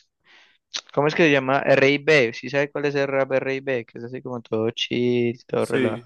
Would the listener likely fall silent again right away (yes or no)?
no